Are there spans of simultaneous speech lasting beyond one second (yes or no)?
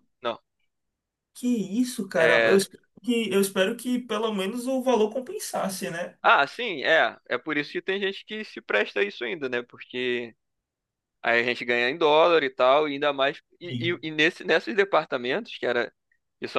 no